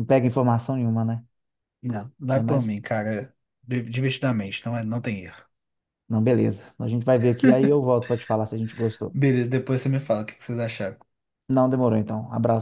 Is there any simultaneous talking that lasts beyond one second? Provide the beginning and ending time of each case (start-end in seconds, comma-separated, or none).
none